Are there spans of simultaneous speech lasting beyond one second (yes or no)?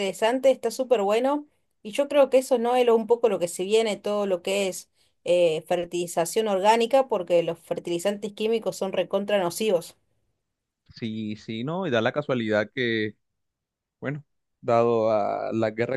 no